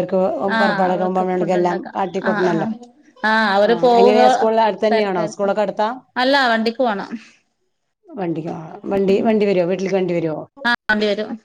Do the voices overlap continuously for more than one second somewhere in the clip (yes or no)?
yes